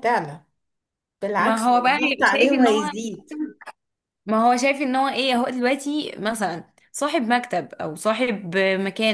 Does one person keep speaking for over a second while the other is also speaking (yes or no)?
yes